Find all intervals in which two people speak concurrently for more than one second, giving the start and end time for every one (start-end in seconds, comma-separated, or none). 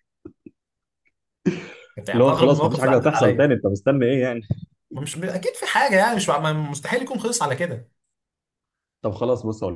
2.1-3.5